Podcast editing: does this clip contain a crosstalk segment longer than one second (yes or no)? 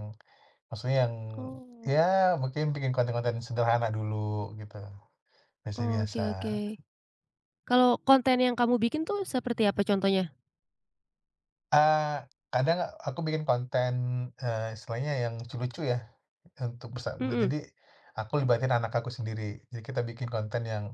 no